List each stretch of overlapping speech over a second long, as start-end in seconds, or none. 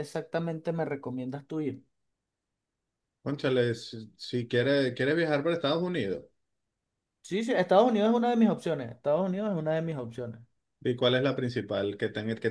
none